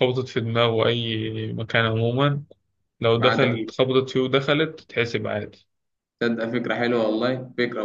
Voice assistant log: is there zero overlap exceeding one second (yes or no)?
yes